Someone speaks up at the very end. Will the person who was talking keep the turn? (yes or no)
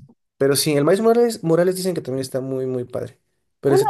no